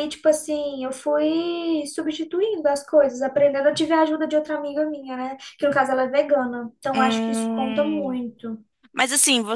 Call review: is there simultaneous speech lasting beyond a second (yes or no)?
yes